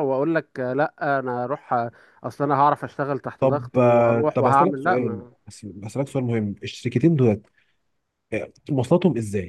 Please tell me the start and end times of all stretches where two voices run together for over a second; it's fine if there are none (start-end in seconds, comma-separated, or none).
3.4-5.2